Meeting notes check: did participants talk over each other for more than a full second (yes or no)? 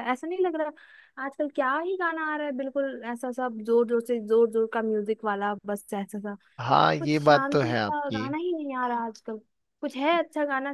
yes